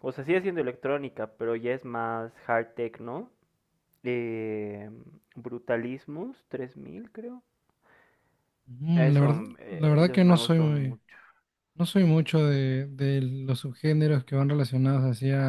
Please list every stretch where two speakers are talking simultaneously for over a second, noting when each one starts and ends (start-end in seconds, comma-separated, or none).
8.9-11.0